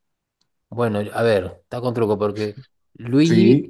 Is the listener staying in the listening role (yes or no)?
yes